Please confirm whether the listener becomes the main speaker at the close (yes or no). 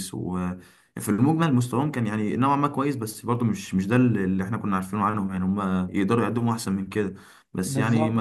no